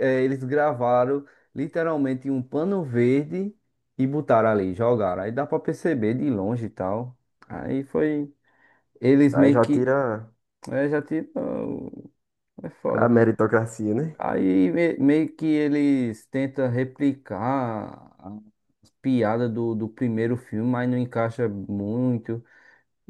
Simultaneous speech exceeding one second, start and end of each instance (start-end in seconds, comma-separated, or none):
none